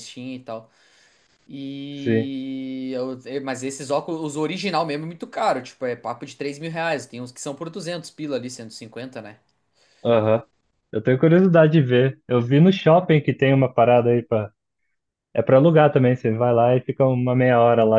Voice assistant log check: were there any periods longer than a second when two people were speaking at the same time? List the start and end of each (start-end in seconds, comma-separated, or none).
none